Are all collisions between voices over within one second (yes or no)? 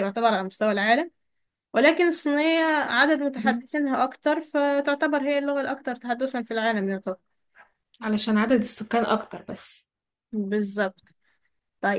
yes